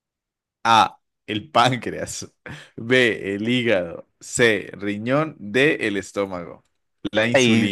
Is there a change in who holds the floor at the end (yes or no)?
yes